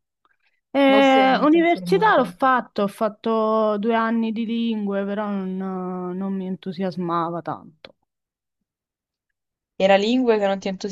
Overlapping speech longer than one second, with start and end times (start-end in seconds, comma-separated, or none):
0.9-2.3